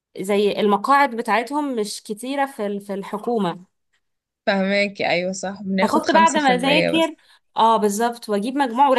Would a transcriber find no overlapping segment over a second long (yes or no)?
no